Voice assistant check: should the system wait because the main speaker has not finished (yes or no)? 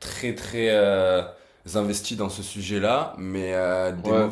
yes